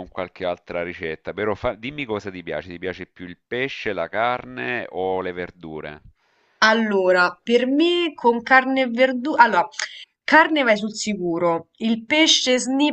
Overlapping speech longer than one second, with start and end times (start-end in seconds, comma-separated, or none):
none